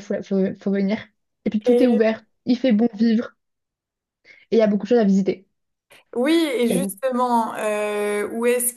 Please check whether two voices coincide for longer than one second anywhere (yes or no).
no